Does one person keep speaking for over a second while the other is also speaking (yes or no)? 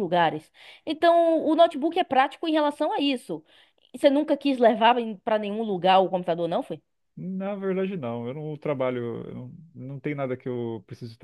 no